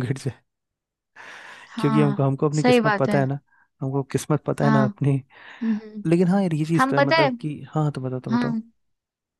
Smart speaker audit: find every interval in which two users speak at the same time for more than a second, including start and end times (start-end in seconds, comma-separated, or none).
1.8-3.3